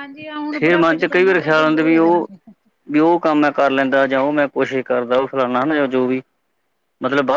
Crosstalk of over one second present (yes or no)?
yes